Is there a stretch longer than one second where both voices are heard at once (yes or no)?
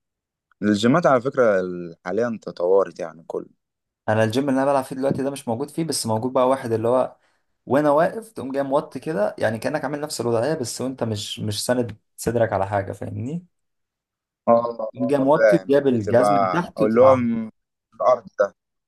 yes